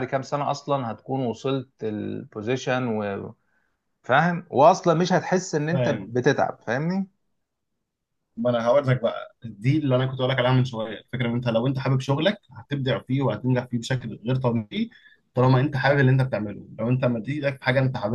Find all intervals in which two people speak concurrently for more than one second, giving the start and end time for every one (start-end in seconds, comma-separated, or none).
none